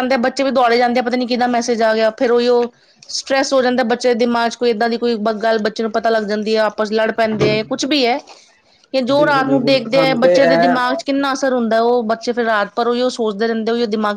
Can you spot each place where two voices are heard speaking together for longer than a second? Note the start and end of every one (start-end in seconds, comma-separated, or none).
9.2-10.8